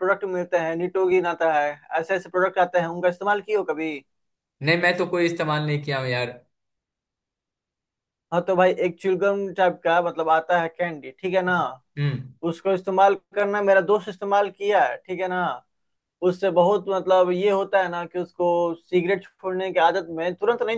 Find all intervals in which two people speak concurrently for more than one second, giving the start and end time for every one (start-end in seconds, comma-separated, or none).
none